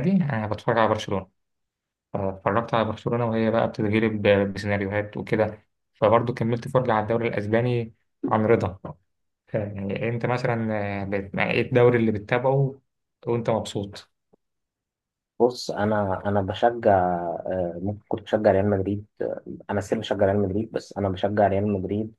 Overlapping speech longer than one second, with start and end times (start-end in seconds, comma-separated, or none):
none